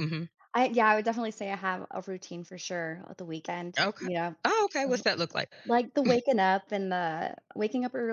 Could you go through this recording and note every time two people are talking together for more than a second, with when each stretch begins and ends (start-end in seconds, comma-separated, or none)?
none